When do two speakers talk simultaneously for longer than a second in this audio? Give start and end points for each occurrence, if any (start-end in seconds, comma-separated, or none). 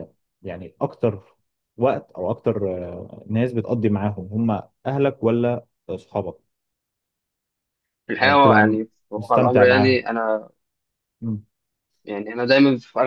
8.2-10.1